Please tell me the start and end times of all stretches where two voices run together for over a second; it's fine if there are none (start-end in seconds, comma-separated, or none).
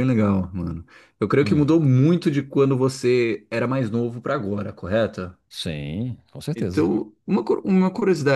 none